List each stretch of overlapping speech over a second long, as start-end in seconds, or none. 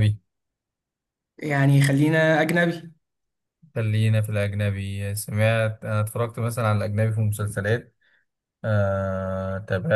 none